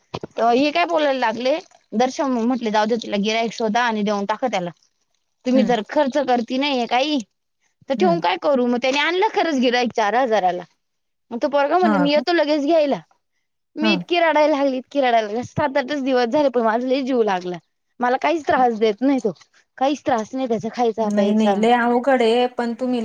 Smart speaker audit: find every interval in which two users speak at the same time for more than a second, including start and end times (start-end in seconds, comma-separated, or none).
none